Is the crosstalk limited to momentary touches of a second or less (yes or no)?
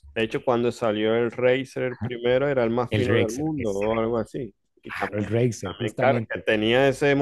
no